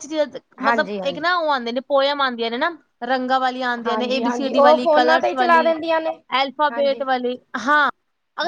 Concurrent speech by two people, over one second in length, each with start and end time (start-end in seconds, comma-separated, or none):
3.9-5.7